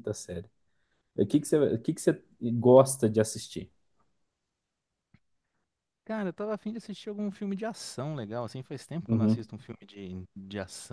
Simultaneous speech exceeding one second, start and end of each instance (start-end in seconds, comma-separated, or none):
none